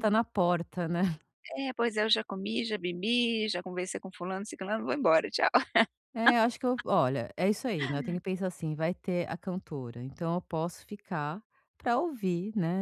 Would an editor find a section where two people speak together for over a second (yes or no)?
no